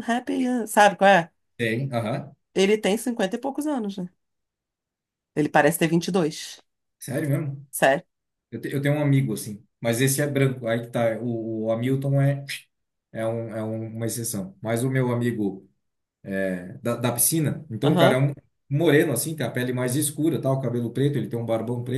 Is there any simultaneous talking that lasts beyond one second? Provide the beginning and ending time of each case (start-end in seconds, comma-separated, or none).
none